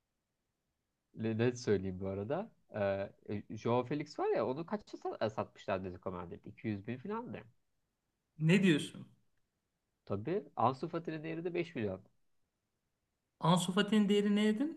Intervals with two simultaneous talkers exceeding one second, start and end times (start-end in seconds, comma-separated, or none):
none